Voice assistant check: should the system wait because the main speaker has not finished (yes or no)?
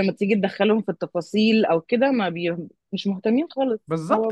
no